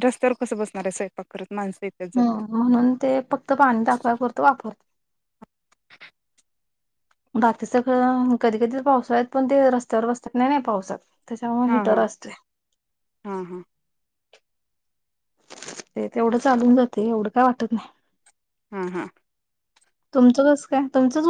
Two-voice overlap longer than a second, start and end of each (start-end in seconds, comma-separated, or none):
none